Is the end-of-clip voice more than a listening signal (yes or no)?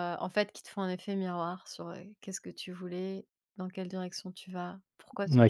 yes